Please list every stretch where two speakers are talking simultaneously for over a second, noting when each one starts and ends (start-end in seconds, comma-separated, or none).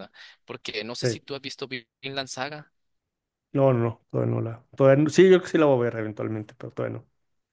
none